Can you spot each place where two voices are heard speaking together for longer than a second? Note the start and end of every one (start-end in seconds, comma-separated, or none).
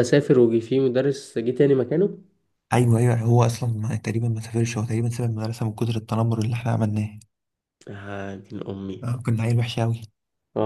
none